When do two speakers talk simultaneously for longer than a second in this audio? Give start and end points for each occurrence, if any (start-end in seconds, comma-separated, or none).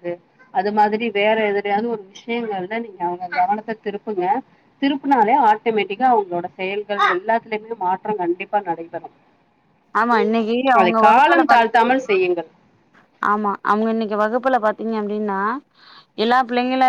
10.8-12.1